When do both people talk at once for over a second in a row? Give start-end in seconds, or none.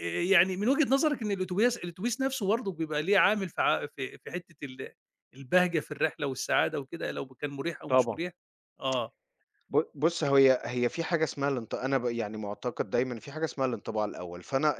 none